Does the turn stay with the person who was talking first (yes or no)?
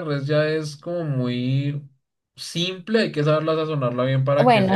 no